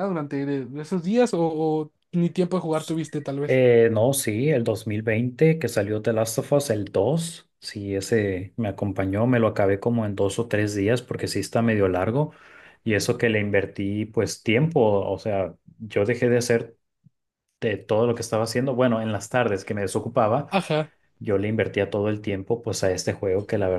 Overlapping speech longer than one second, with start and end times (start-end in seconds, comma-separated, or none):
none